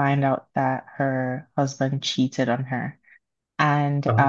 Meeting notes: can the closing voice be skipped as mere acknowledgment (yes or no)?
yes